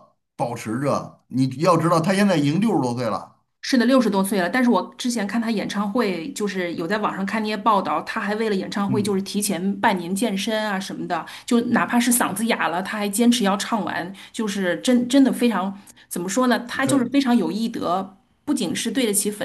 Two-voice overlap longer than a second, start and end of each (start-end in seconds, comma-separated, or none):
none